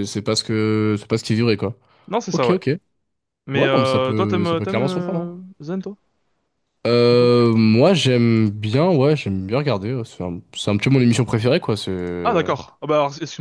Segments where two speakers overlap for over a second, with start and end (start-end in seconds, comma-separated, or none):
3.5-5.4